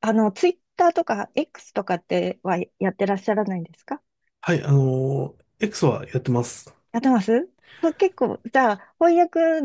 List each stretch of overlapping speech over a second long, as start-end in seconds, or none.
none